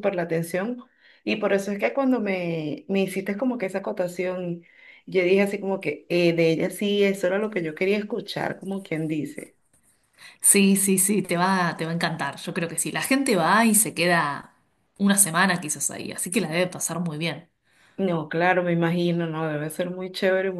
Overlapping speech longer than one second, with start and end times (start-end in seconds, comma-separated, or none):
none